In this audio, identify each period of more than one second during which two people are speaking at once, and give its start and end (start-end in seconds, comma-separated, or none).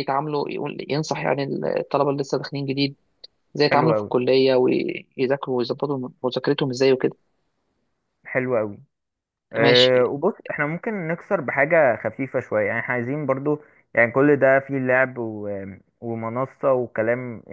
none